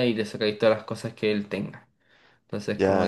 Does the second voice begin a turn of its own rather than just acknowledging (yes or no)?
no